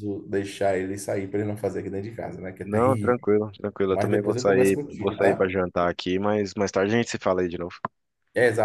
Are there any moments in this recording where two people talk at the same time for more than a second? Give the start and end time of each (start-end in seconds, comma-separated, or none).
3.9-5.5